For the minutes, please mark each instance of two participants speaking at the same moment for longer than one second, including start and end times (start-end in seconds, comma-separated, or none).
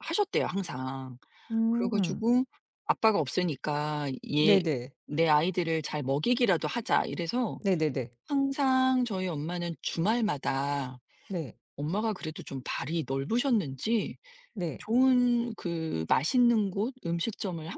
none